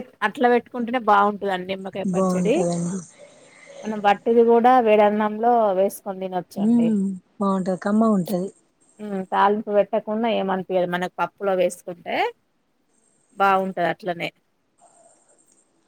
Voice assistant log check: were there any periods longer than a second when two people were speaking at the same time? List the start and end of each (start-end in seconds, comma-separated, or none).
none